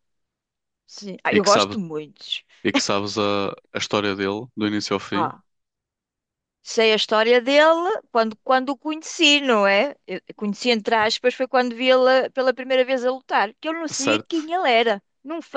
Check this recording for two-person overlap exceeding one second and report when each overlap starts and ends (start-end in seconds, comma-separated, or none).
none